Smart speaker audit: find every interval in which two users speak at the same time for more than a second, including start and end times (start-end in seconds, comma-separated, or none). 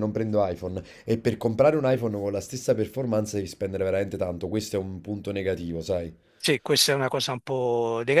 none